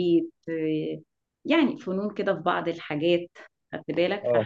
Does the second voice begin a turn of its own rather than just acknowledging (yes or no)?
no